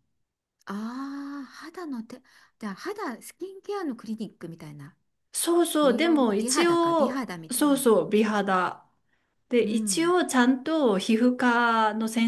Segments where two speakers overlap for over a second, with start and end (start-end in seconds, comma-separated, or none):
5.8-7.9